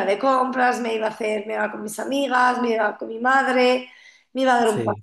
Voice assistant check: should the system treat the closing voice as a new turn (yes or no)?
no